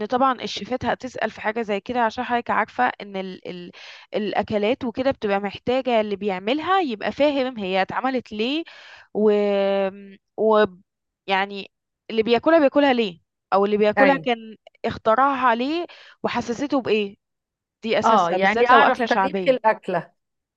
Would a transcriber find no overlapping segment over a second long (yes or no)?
no